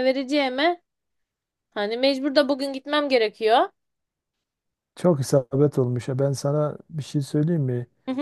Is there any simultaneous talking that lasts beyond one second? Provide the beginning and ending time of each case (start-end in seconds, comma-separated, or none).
none